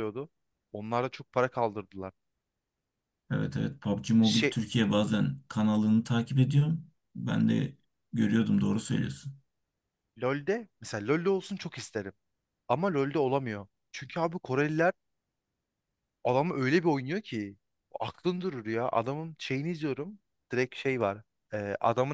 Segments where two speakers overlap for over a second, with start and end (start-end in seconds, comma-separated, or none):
none